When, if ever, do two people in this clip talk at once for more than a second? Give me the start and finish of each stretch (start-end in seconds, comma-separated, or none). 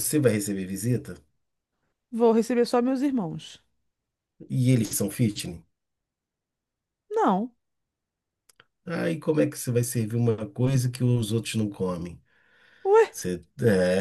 none